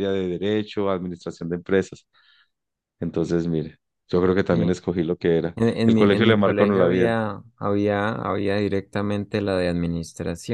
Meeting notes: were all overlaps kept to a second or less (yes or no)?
no